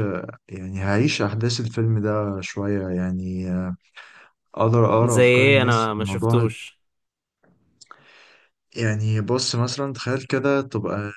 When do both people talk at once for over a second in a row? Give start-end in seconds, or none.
5.0-6.5